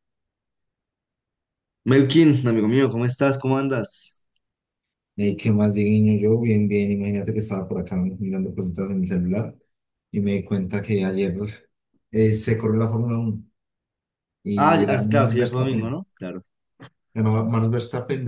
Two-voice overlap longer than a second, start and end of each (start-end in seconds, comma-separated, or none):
14.6-16.0